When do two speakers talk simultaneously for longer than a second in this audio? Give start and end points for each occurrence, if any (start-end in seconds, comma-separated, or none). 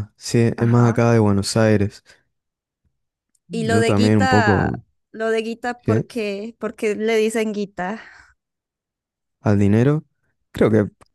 3.5-4.8